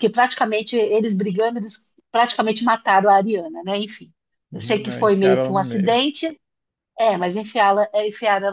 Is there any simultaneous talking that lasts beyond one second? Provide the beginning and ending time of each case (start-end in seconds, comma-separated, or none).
4.5-6.0